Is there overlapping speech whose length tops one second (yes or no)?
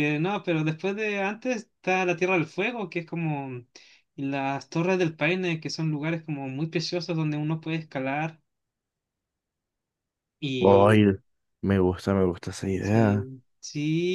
no